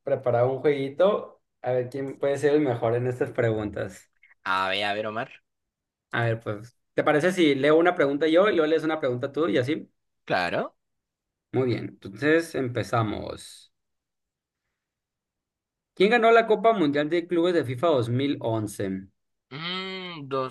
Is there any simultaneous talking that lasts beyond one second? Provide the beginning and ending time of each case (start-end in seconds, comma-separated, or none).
none